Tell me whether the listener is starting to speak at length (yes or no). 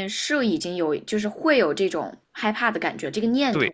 yes